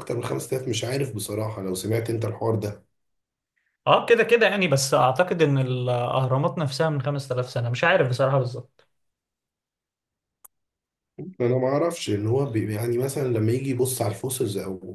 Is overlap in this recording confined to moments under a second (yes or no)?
yes